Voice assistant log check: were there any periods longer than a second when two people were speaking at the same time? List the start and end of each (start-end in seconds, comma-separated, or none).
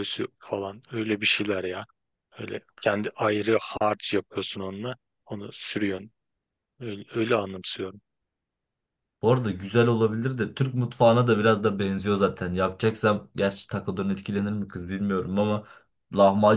none